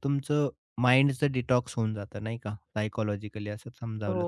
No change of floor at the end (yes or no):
yes